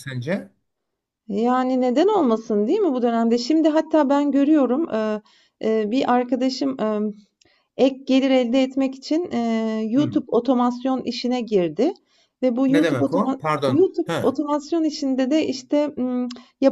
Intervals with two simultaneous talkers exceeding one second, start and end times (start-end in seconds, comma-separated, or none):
12.7-14.4